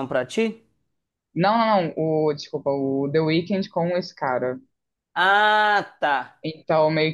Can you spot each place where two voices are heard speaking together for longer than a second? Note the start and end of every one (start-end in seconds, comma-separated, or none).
none